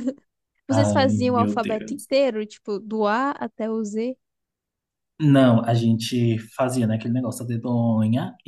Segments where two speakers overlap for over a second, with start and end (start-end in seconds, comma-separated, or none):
0.7-2.1